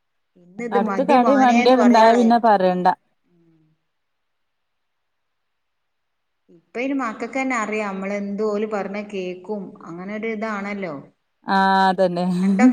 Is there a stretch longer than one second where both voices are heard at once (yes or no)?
yes